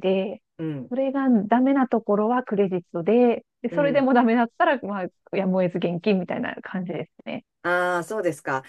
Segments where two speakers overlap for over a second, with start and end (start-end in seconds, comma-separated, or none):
none